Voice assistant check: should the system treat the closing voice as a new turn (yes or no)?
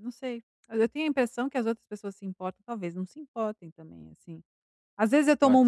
no